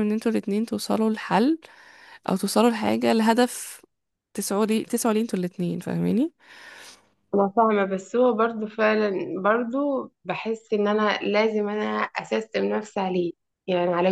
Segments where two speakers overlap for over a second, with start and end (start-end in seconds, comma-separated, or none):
none